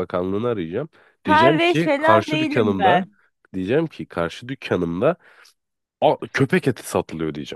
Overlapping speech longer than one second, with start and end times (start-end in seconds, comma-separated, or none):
1.2-3.0